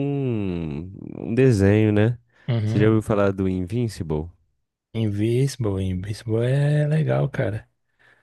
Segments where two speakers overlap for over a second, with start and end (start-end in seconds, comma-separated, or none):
none